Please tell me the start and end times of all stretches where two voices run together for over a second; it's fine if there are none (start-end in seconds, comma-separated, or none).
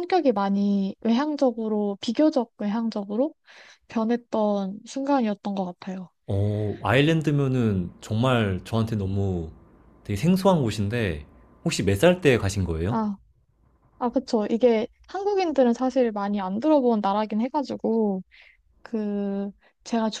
none